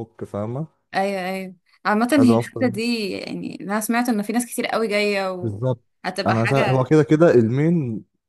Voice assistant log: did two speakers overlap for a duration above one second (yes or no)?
no